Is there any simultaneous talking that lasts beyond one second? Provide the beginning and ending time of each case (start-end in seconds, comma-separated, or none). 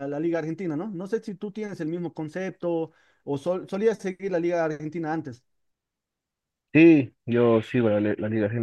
none